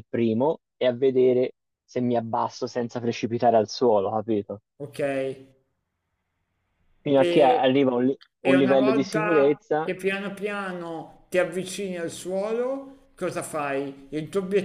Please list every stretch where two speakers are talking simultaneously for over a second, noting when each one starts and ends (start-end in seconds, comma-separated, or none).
8.4-9.9